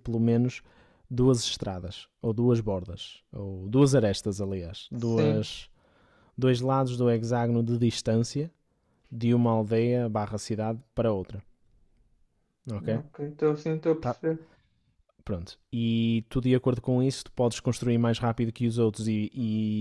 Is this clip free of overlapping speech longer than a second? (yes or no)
yes